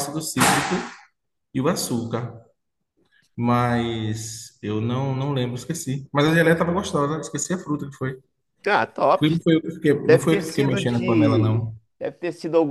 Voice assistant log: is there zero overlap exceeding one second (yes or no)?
no